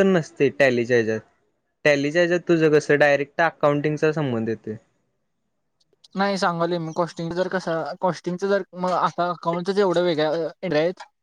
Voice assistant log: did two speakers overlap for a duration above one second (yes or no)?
no